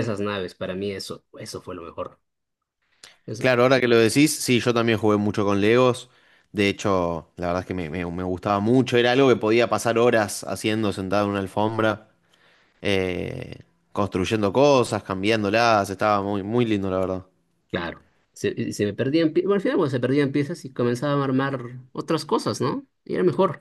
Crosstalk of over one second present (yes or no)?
no